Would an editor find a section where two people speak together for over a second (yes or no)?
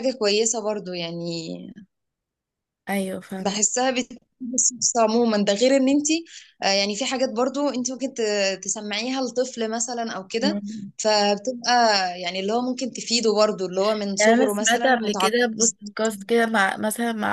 yes